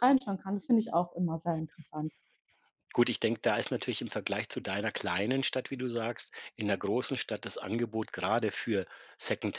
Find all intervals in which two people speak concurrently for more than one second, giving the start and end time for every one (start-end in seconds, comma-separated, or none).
none